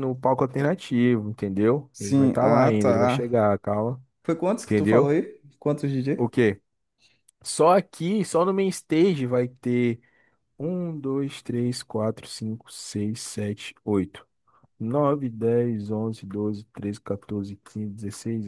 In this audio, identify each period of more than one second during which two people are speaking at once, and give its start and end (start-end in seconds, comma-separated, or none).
1.9-3.4